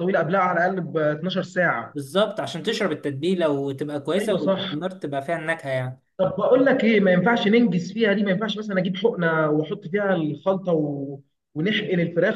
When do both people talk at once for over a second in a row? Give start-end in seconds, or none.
none